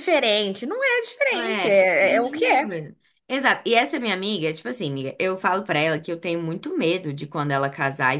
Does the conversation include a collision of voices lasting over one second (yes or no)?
yes